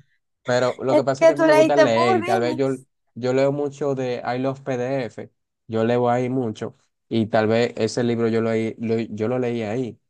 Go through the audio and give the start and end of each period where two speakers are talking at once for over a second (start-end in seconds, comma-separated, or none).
0.9-2.7